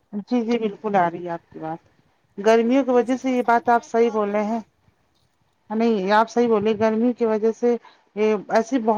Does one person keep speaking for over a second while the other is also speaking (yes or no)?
yes